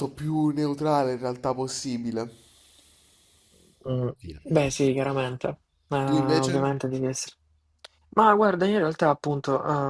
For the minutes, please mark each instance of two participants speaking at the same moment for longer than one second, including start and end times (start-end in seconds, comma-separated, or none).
none